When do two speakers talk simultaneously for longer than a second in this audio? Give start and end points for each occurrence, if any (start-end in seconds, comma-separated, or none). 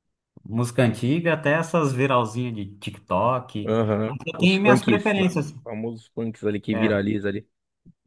3.6-5.5